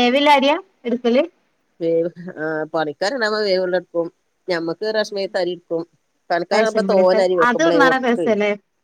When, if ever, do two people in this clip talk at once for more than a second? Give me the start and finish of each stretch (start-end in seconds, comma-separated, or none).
6.5-8.3